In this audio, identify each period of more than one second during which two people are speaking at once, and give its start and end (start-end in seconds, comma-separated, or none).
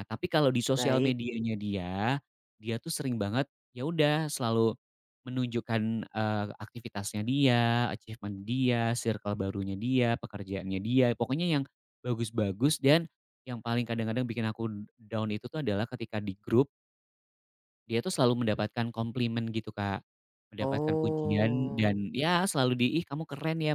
20.6-22.0